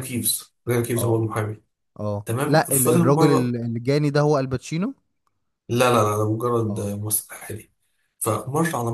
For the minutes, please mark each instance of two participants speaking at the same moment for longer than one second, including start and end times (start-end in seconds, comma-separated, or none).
2.2-3.5